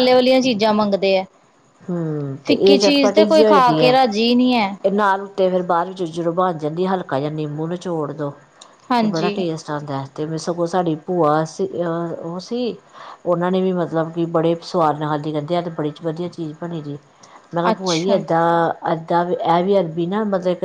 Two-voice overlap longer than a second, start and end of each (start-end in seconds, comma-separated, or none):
2.5-3.9